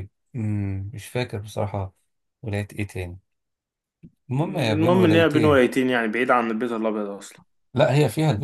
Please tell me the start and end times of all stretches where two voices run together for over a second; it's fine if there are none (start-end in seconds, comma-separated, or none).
4.4-5.6